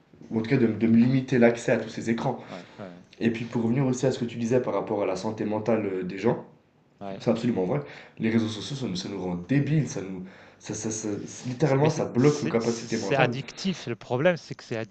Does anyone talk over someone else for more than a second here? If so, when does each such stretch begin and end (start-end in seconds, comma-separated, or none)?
11.6-13.4